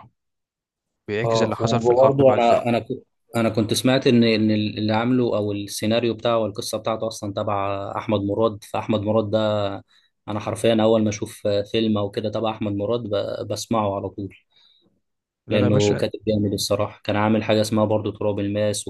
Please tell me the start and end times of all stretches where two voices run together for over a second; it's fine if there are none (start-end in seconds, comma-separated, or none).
1.2-2.6